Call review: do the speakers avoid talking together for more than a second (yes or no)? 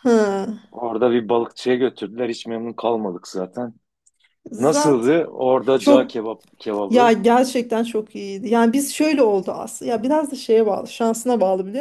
yes